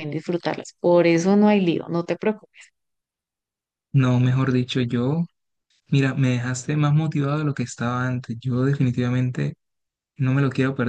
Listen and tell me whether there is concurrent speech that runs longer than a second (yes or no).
no